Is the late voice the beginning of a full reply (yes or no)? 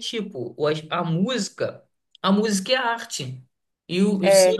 no